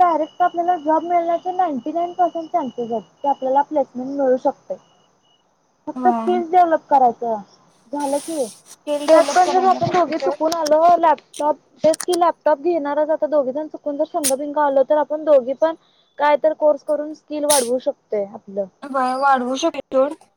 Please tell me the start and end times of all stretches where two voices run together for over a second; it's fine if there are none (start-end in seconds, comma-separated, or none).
9.1-10.5